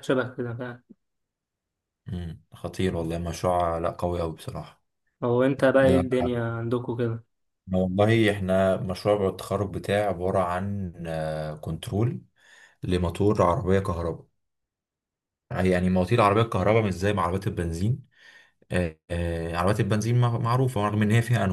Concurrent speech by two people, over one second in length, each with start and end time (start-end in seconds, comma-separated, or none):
none